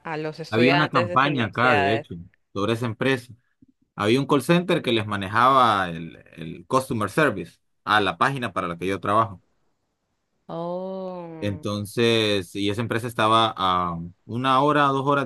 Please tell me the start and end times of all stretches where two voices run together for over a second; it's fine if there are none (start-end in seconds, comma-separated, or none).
0.5-2.0